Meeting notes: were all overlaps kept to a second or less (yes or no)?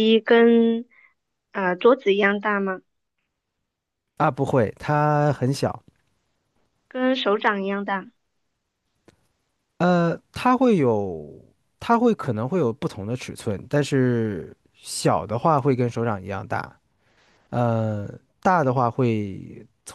yes